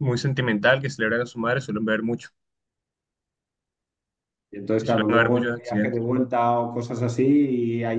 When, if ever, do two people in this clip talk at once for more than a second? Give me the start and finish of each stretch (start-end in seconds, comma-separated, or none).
4.8-6.0